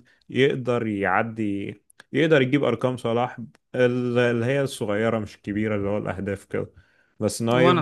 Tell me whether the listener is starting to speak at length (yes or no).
no